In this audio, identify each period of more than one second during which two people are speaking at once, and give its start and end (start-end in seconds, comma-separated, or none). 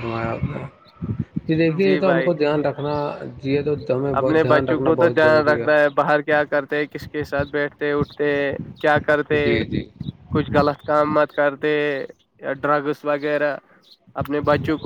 4.2-5.7